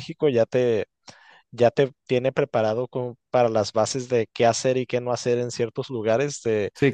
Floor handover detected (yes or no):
no